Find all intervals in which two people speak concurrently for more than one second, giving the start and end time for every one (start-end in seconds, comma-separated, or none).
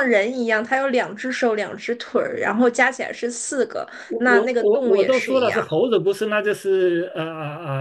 4.1-5.6